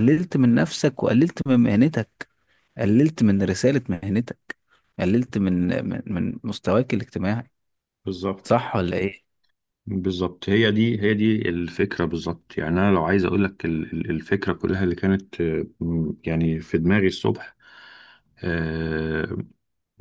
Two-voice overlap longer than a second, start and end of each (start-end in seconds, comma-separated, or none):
none